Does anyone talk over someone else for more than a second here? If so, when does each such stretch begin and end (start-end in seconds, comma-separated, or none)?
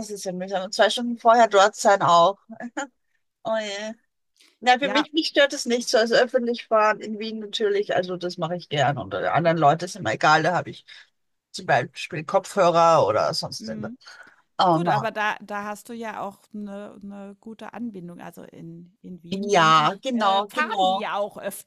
19.5-21.1